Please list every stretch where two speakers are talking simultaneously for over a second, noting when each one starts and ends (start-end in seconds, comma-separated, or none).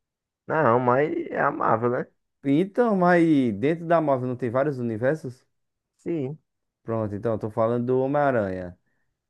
none